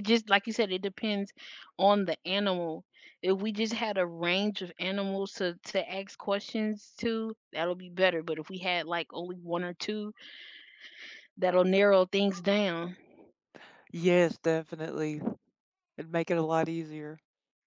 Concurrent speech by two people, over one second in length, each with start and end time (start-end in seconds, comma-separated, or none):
none